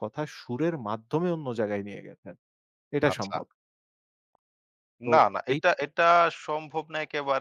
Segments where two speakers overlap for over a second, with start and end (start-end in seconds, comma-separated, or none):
none